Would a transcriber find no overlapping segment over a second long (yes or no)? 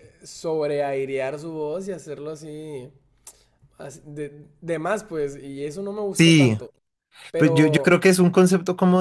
yes